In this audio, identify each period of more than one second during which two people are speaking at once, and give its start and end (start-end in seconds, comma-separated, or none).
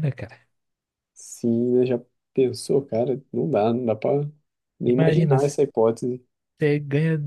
none